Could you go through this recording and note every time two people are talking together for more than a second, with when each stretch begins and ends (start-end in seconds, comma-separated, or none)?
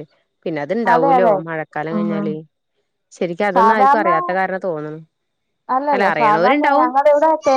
none